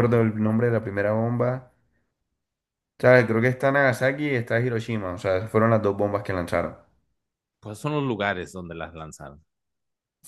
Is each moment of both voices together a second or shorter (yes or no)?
yes